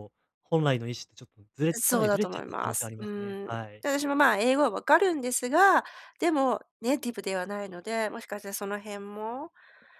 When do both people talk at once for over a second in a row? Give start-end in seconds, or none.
1.7-3.9